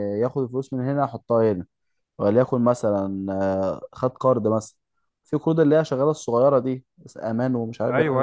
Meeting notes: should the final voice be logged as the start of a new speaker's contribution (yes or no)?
yes